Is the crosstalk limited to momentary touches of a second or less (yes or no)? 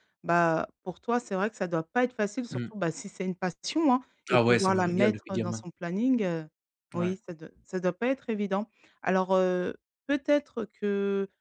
no